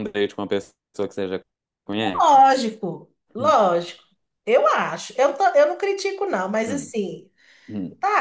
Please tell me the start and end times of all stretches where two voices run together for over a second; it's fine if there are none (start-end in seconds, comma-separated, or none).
none